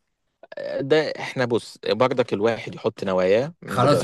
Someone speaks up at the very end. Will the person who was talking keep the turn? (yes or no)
no